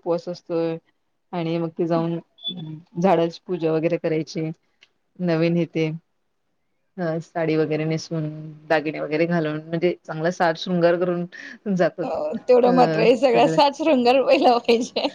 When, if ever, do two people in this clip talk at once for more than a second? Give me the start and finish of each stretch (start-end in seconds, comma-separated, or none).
none